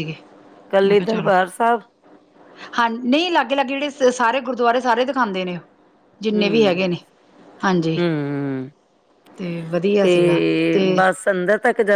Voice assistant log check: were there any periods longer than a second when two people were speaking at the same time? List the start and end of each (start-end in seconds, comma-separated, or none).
none